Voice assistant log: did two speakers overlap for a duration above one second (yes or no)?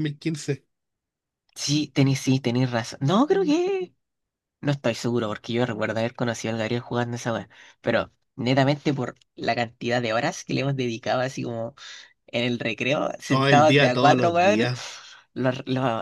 yes